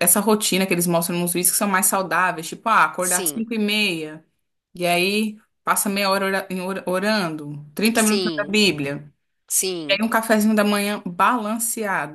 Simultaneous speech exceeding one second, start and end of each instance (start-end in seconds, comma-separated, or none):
none